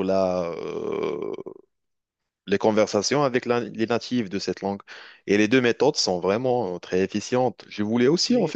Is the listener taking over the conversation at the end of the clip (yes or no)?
no